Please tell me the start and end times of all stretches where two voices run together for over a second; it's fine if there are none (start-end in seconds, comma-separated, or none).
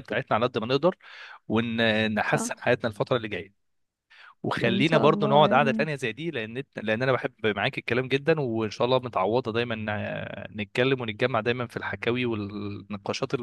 4.7-5.9